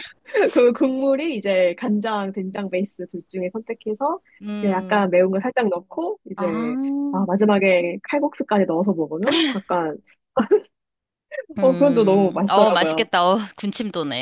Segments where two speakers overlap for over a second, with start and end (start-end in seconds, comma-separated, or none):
11.6-13.1